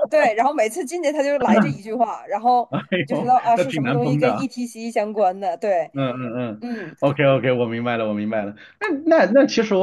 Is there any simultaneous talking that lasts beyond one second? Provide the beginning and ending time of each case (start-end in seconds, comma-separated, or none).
3.0-4.5